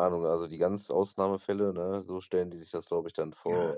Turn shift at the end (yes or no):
yes